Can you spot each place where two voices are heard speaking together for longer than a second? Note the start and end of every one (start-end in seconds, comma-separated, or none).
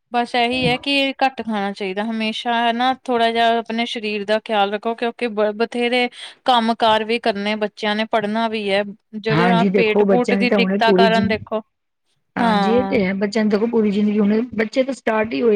9.3-11.2